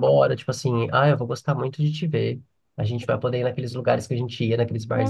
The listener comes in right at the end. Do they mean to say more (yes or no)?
yes